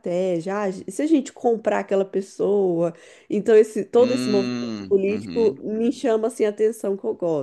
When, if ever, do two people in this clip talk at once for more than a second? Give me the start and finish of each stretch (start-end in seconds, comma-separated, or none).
4.0-5.6